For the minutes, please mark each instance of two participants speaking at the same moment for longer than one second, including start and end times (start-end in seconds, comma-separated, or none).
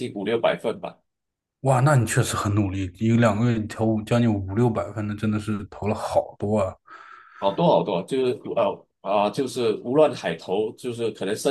none